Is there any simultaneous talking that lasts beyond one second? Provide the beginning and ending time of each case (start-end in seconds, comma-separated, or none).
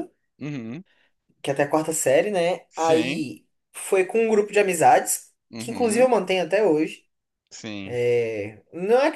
none